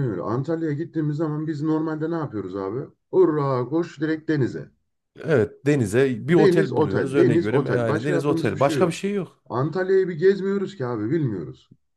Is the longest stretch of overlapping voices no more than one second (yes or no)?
no